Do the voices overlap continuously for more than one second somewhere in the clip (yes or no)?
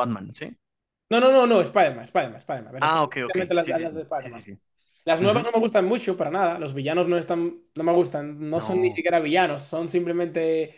yes